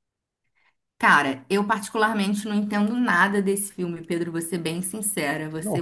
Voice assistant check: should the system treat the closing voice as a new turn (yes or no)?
no